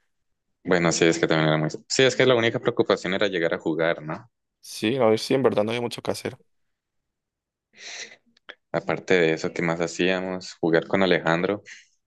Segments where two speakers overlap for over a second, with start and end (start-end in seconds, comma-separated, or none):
none